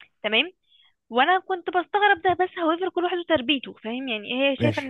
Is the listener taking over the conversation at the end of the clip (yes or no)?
no